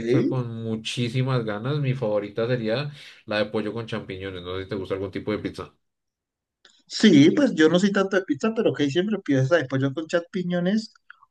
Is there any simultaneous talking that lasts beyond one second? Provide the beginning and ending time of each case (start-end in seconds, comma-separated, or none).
none